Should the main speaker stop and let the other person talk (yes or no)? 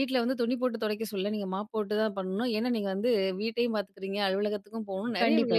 no